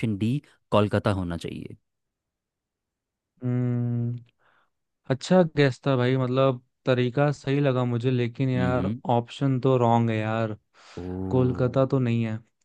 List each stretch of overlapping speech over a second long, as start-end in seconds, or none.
none